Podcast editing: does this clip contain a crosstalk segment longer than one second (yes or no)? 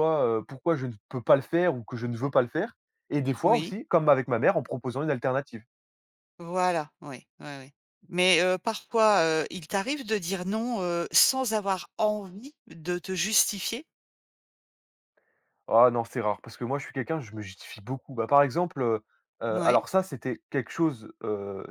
no